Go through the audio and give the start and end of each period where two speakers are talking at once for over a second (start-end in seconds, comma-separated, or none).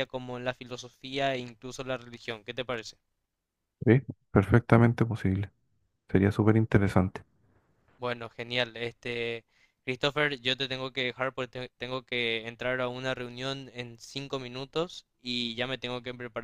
none